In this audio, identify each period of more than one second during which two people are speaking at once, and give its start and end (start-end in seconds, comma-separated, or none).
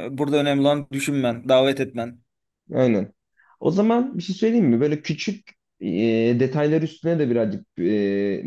none